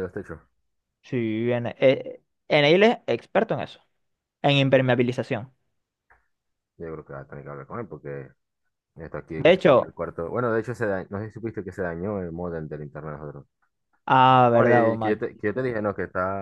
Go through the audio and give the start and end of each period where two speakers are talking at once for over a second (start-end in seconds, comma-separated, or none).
14.5-15.7